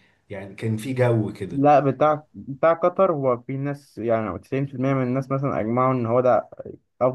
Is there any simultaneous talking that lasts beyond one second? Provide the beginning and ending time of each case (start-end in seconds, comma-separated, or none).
none